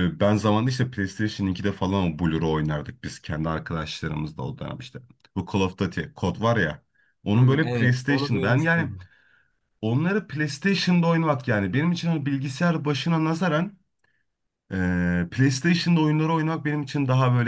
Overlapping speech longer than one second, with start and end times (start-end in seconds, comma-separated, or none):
7.3-8.9